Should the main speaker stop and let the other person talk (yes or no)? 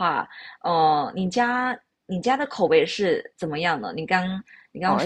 yes